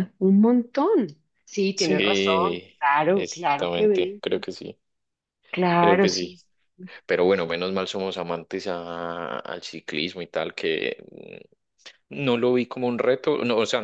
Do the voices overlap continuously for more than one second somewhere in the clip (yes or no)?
yes